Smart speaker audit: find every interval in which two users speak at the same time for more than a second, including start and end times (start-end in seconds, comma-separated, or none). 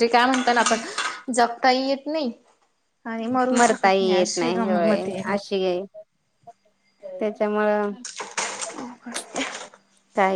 3.6-5.3